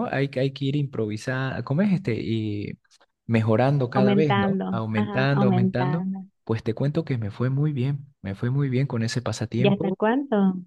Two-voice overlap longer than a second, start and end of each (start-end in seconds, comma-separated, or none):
3.9-6.0